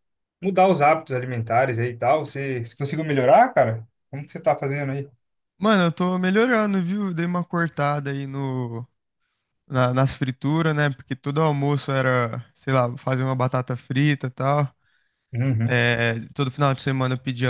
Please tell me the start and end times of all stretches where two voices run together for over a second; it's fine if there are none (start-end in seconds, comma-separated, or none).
none